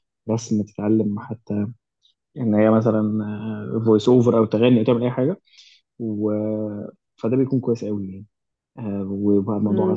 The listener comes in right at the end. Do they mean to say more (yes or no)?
yes